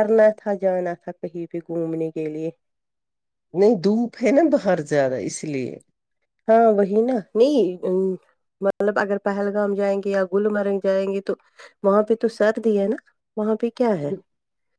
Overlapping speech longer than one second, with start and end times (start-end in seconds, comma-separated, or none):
none